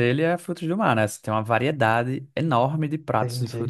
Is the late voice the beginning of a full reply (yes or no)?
no